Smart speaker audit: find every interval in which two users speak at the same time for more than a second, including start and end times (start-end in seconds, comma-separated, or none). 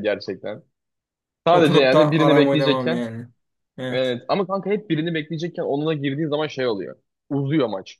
1.5-3.0